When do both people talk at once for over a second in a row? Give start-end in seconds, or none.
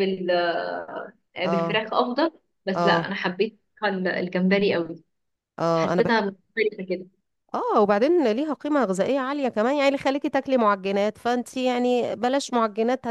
none